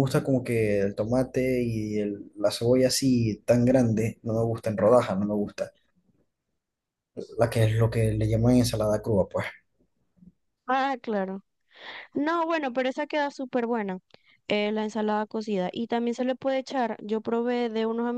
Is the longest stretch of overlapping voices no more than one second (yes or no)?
yes